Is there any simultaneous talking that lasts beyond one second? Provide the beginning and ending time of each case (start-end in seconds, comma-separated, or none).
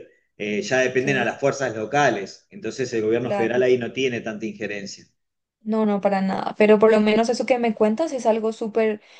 none